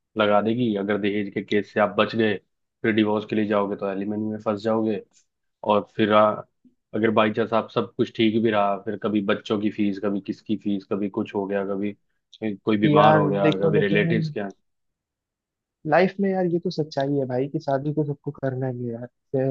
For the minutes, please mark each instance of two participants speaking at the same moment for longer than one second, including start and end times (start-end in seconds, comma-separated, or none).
12.8-14.3